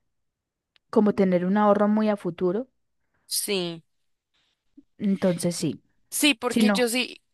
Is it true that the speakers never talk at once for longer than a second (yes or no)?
yes